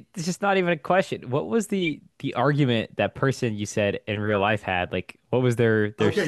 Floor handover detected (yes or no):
yes